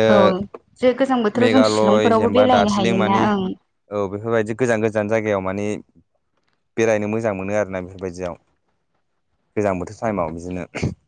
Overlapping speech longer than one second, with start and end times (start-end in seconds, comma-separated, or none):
1.4-3.1